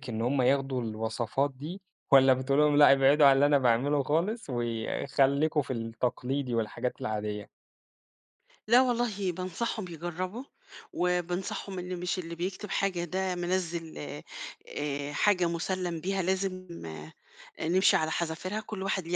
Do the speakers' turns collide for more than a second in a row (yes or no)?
no